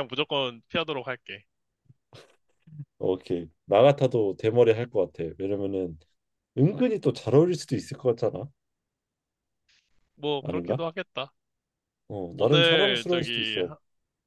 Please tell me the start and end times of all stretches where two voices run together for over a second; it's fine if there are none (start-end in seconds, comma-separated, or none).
12.3-13.7